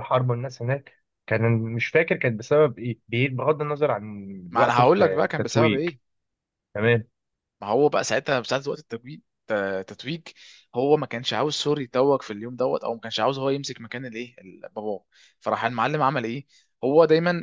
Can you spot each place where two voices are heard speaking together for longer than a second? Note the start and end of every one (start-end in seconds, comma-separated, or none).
4.5-5.9